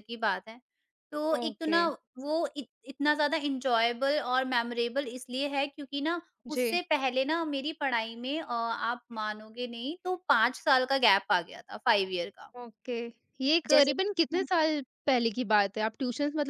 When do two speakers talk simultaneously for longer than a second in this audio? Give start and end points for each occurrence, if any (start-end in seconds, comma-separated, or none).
none